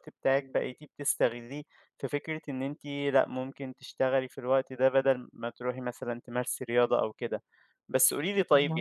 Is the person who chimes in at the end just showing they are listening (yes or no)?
yes